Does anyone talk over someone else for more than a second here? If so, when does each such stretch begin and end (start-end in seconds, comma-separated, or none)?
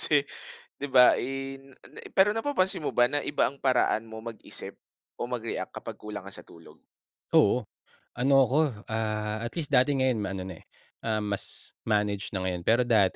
none